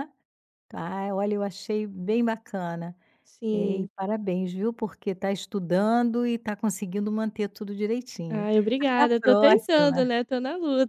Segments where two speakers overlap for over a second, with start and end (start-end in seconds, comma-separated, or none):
8.3-10.1